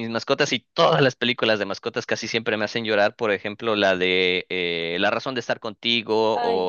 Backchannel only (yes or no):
yes